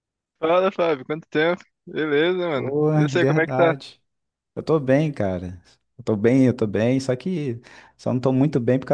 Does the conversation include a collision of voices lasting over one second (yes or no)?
yes